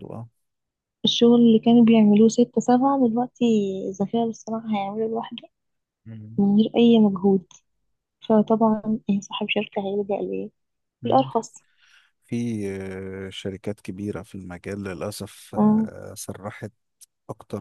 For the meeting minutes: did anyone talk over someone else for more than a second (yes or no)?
no